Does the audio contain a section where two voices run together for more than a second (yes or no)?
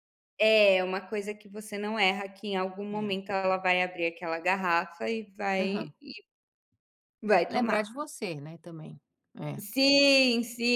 no